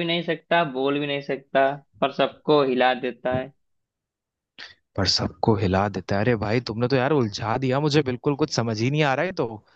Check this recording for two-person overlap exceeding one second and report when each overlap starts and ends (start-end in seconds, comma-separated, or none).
none